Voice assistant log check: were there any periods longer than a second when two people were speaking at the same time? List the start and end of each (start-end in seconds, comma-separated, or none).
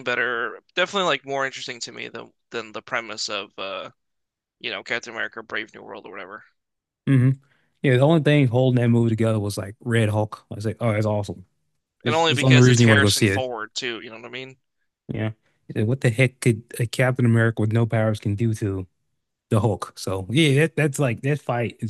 12.1-13.4